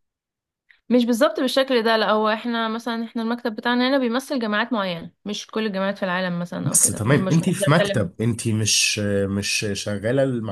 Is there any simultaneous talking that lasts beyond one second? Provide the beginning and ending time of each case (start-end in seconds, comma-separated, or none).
6.6-8.1